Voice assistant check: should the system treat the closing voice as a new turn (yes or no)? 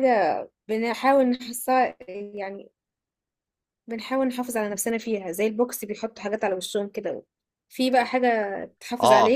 yes